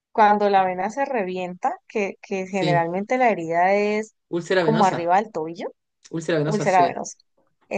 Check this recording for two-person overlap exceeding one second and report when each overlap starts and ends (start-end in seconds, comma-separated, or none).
none